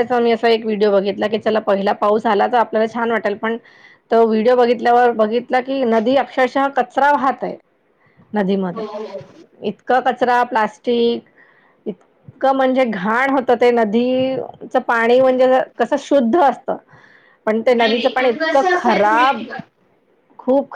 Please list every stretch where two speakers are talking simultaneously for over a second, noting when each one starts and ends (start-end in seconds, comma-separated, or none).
17.9-19.4